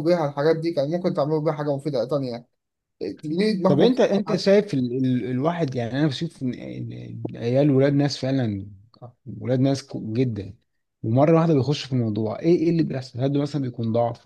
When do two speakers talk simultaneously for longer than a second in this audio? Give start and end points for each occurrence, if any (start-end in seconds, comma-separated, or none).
none